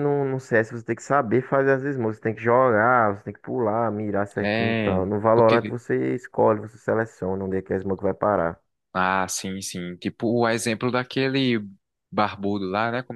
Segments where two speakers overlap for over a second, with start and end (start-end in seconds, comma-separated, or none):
4.4-5.8